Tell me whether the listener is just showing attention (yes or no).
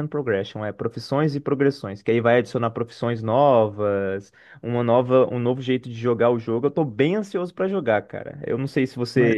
yes